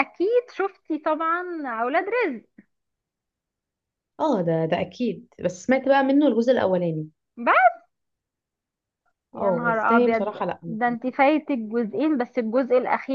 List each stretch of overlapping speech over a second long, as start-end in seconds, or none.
9.3-11.2